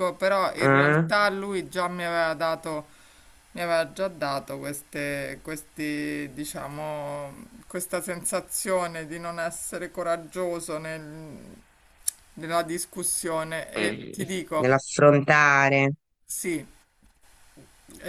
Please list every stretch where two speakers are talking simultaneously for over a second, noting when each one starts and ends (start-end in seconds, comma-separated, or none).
none